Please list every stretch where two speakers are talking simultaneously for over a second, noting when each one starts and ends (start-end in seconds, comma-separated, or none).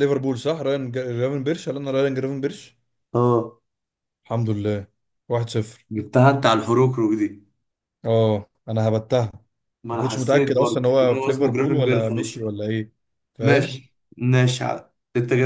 9.9-12.4